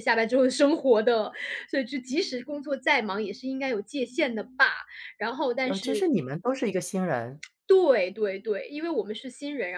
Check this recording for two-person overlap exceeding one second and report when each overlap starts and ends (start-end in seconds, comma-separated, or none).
none